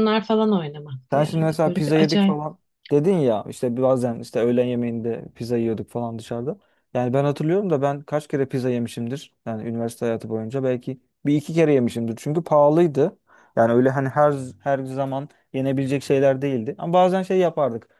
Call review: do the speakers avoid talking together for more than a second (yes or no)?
no